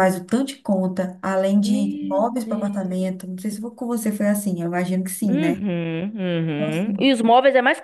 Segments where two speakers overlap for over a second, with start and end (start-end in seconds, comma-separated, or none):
1.6-3.1